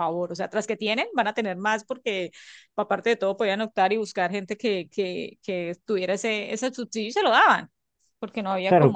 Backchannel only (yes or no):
no